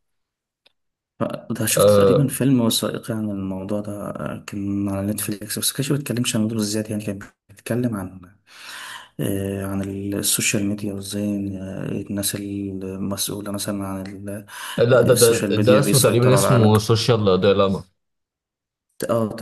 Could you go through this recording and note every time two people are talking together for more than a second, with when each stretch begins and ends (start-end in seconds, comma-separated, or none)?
15.1-16.9